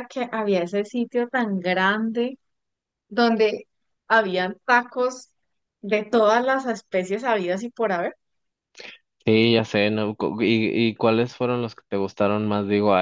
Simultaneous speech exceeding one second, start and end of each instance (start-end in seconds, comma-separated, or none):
none